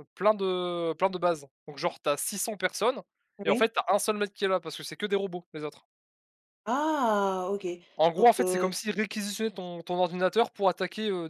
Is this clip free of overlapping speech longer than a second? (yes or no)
yes